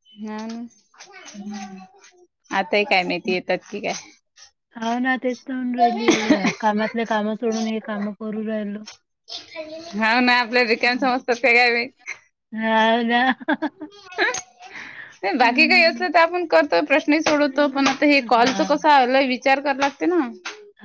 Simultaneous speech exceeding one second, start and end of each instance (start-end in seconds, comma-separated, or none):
17.5-18.8